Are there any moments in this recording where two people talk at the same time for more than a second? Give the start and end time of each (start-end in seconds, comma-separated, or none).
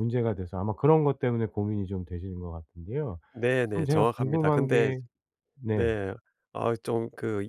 3.7-4.9